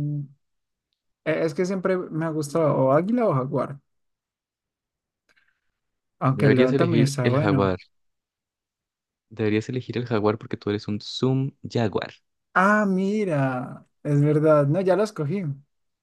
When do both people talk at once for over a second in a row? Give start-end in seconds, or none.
6.3-7.8